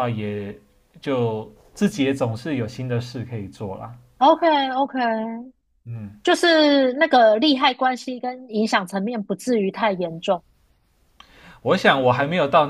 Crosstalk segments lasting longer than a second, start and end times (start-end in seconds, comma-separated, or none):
none